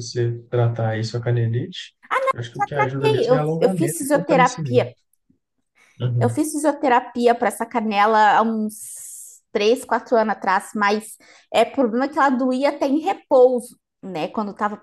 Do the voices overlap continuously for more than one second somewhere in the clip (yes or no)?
yes